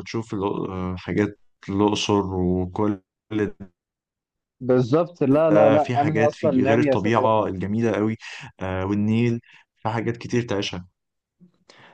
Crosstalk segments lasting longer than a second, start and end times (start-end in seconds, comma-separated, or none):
5.5-7.3